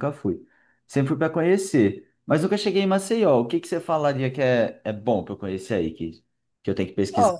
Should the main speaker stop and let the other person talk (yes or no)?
yes